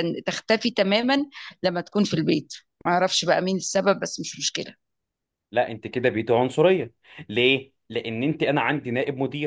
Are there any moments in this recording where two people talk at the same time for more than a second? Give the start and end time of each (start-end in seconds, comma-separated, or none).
none